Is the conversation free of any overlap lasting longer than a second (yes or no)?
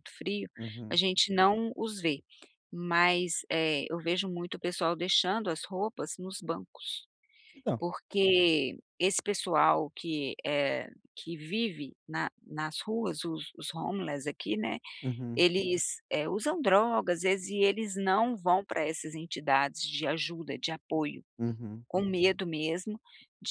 yes